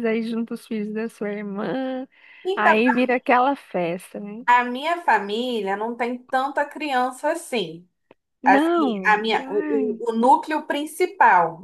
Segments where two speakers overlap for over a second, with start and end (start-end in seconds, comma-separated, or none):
8.4-10.0